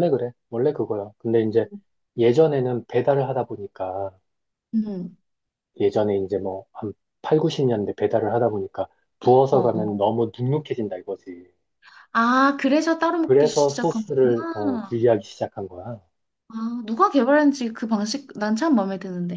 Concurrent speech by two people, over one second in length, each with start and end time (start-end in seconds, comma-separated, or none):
13.2-15.0